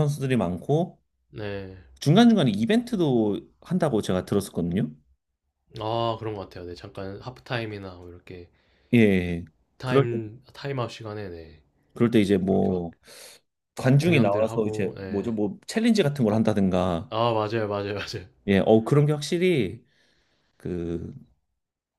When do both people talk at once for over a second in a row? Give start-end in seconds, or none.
14.0-15.3